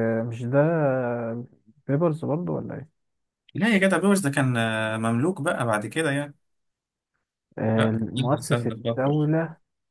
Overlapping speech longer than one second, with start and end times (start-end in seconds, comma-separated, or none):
7.8-9.3